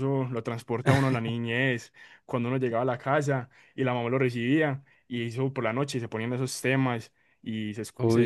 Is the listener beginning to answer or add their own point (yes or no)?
no